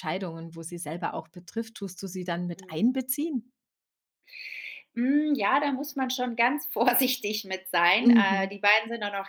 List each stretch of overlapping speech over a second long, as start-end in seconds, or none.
none